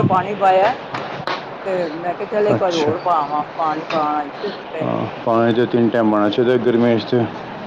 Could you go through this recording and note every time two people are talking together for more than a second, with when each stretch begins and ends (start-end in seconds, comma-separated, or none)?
none